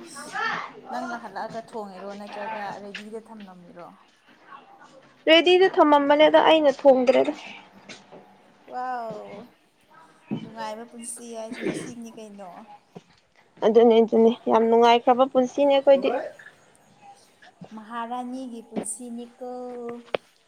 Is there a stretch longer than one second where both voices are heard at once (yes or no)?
no